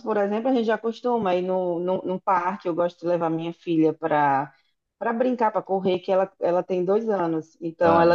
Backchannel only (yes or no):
yes